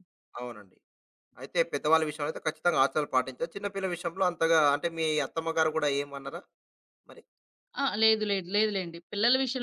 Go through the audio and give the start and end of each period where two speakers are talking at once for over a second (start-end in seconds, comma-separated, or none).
none